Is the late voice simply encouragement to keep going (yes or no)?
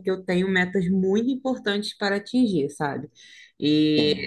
yes